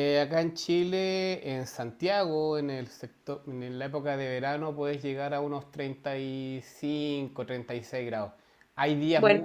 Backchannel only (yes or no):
yes